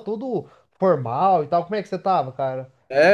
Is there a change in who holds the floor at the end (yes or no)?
yes